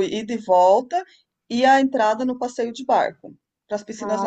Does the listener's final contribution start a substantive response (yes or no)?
yes